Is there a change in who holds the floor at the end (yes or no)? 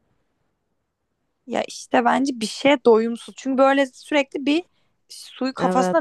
no